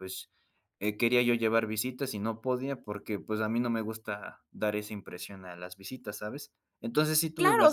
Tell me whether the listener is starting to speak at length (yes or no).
yes